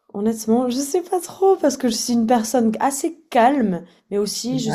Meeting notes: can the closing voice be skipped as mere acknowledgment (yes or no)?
yes